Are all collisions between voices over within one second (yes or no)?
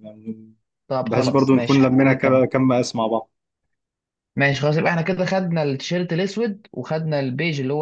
no